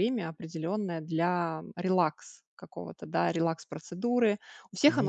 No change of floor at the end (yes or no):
yes